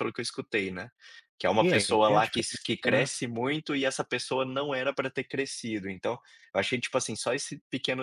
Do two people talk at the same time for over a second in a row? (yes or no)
yes